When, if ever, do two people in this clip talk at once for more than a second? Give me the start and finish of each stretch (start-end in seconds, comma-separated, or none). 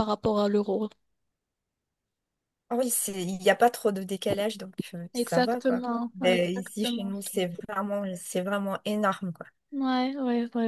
5.1-7.1